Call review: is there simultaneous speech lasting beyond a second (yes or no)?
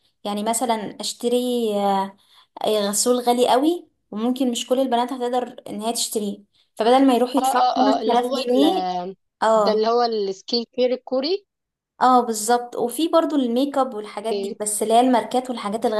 yes